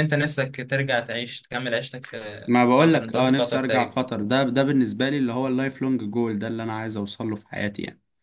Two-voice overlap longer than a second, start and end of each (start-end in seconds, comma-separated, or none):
2.6-4.0